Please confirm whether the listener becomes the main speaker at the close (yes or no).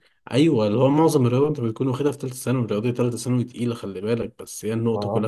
no